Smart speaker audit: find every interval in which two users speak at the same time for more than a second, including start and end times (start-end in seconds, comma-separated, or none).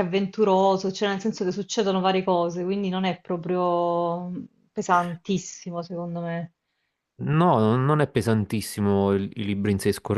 none